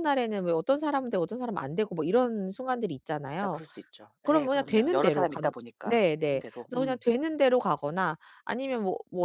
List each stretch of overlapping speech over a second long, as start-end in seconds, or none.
4.2-7.0